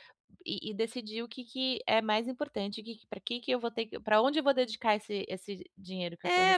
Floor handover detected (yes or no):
yes